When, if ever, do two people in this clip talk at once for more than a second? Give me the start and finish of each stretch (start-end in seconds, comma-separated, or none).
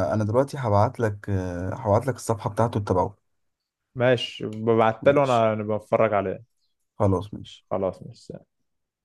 none